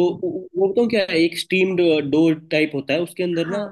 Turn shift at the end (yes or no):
no